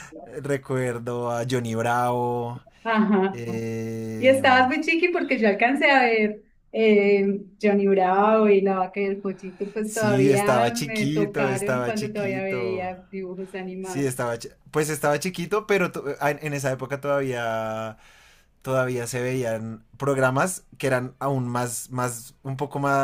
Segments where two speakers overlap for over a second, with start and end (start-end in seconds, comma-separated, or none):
9.8-12.9